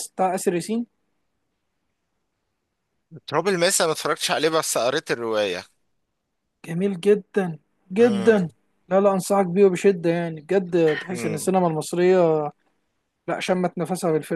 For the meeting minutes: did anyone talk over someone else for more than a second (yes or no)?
no